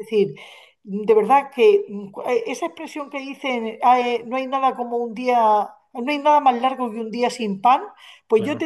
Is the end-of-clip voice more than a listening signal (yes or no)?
no